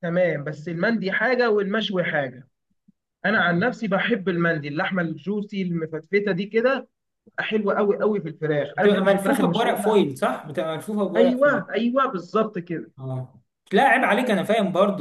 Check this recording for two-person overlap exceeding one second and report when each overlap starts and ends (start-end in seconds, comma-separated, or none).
8.7-10.0